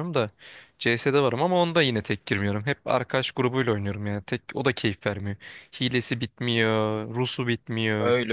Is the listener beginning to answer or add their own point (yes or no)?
yes